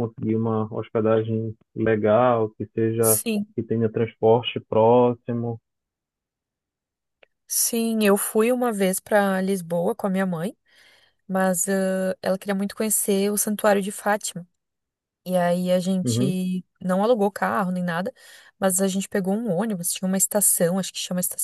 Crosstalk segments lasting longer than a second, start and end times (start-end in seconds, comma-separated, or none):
none